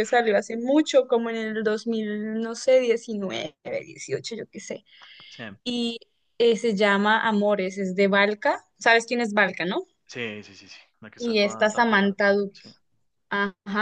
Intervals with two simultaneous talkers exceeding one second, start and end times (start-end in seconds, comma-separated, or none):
11.2-12.7